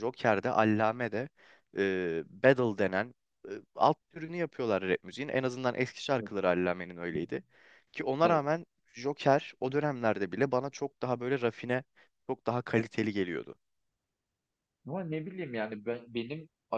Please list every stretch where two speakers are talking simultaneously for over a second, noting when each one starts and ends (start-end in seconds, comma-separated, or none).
none